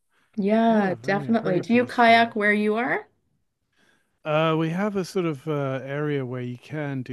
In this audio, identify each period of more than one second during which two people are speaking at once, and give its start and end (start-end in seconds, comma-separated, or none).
0.7-2.4